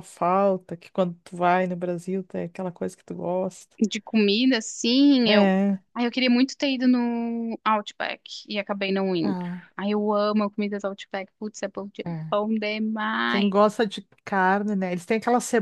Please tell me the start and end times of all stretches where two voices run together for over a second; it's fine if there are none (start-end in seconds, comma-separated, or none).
none